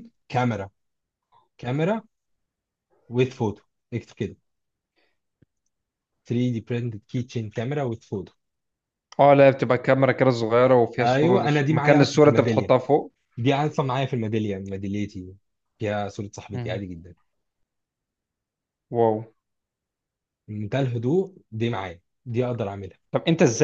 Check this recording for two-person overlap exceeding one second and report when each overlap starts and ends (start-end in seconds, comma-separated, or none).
11.0-12.7